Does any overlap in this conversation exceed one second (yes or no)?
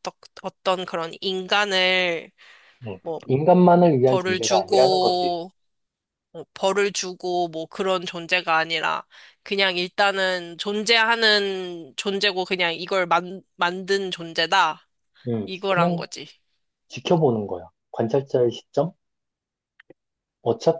yes